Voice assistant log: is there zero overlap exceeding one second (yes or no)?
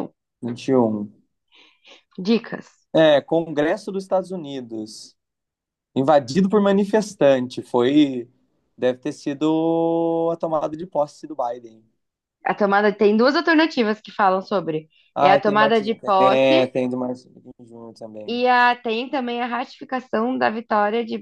no